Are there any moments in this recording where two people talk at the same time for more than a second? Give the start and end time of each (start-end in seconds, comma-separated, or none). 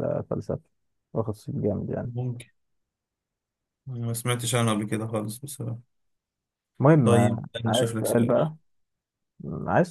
7.0-8.4